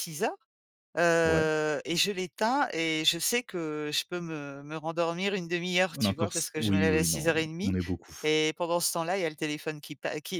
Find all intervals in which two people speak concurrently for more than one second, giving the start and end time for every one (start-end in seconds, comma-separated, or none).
5.9-7.8